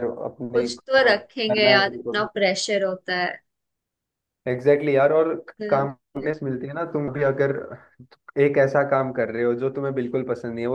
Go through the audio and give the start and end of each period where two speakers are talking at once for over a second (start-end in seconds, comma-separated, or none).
0.5-2.3